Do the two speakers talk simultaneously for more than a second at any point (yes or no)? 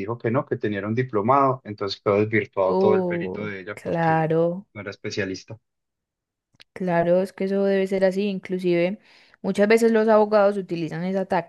yes